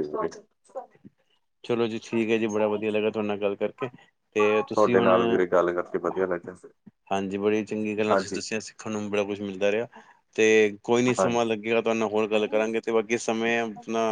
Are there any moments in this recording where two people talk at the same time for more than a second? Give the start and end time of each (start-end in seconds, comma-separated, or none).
none